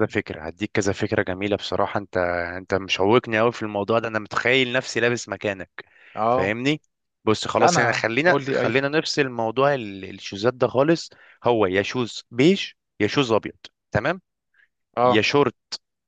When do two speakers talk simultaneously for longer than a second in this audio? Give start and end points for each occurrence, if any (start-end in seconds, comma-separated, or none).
7.6-8.8